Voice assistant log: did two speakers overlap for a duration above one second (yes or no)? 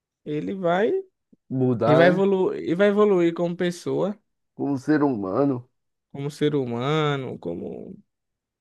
no